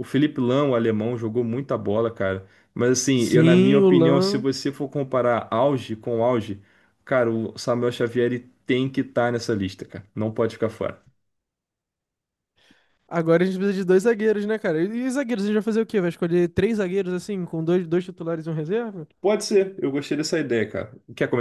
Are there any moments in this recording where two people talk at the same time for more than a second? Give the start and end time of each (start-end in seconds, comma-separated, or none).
3.1-4.5